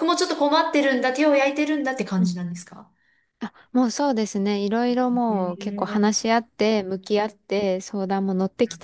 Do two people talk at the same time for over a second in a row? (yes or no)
yes